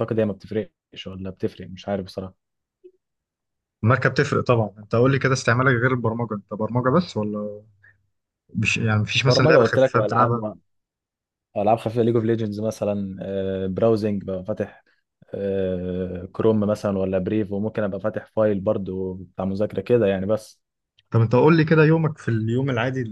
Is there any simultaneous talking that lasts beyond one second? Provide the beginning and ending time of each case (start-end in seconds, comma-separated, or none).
9.3-10.5